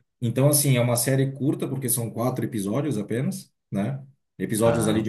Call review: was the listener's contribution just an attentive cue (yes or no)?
yes